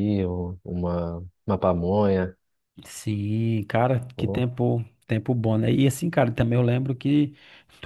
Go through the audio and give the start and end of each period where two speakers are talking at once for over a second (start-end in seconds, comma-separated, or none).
none